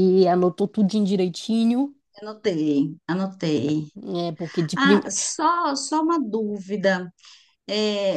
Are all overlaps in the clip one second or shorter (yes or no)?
yes